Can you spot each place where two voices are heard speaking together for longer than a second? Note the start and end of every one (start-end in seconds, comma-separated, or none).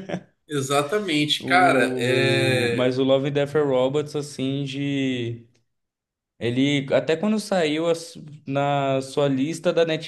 1.4-3.0